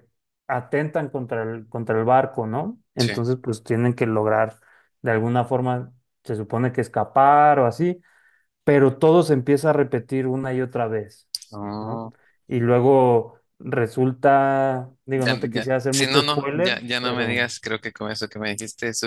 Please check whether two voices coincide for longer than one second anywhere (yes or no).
yes